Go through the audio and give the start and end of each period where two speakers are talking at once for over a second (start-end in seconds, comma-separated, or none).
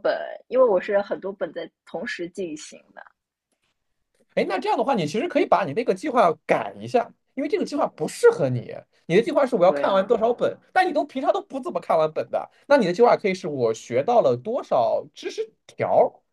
none